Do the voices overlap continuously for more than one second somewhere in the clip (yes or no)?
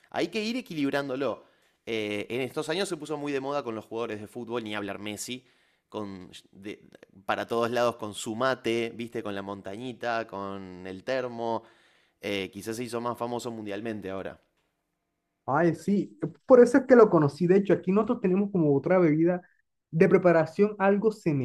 no